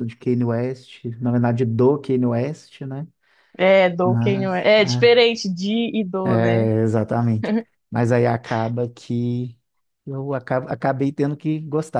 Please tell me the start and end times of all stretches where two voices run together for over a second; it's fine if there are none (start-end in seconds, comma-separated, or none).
4.0-5.2